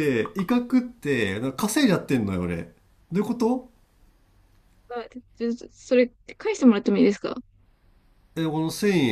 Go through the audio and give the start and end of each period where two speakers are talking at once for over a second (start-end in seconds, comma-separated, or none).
none